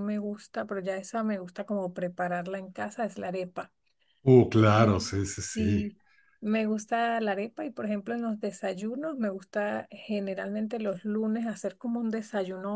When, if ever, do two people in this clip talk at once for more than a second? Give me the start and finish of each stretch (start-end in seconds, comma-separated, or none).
4.6-5.9